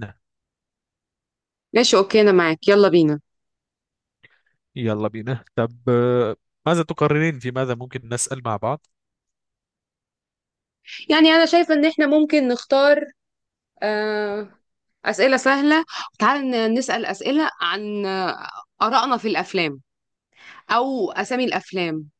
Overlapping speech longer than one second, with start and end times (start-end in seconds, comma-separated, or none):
none